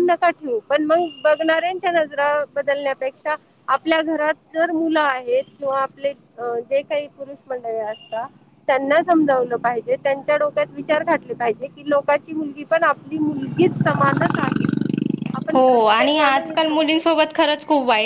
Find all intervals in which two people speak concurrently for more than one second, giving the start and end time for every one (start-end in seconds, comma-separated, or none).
15.5-17.5